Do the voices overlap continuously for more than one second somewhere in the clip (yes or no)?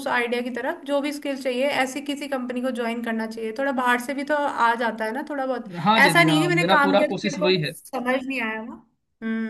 yes